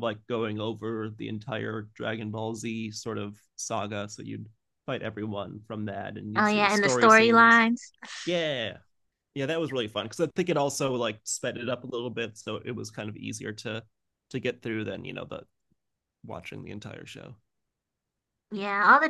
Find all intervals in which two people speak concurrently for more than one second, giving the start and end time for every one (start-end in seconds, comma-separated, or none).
6.3-7.7